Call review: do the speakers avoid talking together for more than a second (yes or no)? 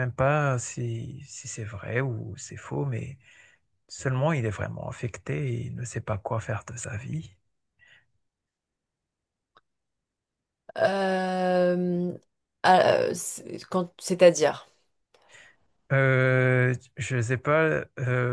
yes